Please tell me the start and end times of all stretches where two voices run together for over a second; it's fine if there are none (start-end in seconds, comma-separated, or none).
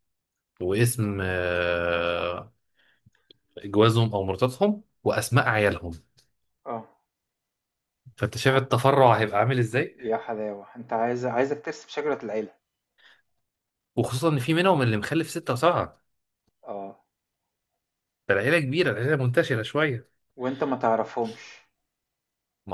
none